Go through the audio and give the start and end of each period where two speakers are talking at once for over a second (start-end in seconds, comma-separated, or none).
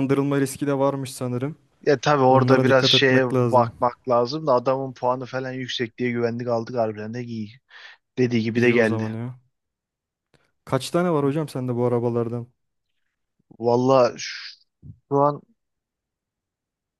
2.3-3.7